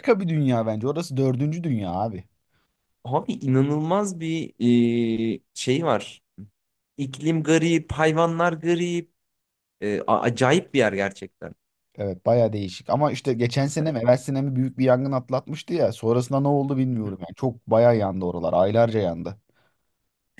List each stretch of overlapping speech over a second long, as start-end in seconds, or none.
none